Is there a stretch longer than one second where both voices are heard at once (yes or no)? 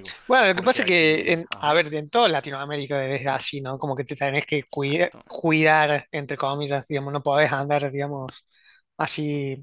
yes